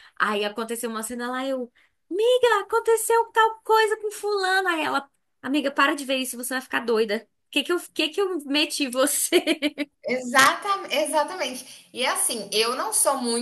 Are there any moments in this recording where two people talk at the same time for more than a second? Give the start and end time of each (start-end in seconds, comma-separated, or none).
none